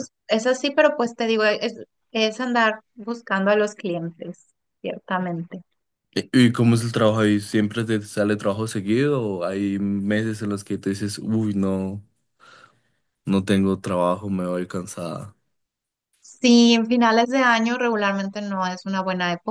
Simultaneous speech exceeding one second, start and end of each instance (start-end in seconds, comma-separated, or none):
none